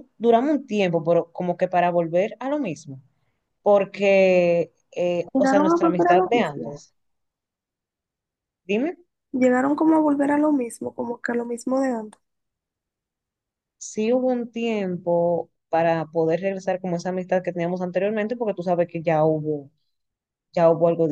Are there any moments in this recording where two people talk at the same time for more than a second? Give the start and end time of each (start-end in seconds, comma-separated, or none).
5.3-6.8